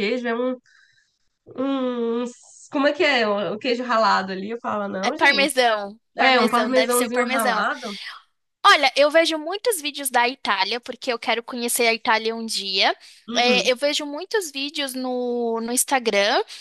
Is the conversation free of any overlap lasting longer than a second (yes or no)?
no